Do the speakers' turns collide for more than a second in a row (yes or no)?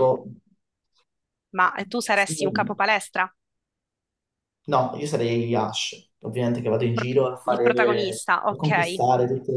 yes